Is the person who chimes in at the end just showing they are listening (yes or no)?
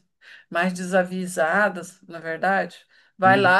yes